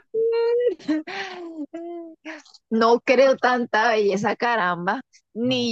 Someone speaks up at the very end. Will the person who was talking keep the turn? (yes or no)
yes